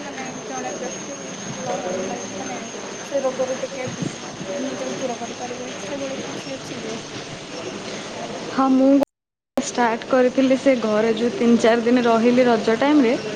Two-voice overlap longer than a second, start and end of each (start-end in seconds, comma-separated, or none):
none